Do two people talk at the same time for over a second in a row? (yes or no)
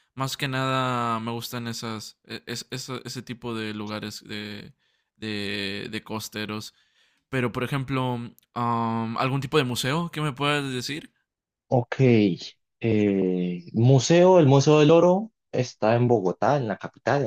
no